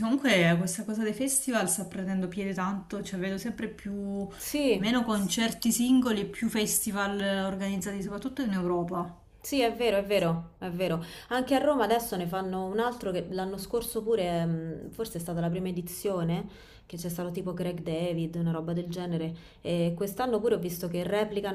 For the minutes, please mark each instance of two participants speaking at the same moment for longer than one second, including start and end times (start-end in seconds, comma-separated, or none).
none